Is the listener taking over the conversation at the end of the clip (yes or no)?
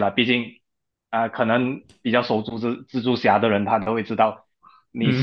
no